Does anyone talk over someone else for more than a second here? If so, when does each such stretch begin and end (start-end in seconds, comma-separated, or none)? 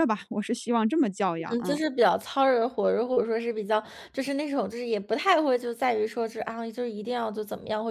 none